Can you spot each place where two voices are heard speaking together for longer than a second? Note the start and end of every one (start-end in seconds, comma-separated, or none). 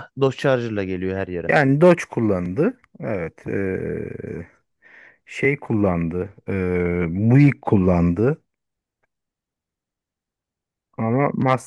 none